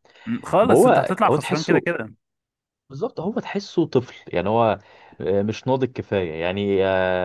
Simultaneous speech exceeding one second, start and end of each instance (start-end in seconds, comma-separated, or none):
0.6-1.8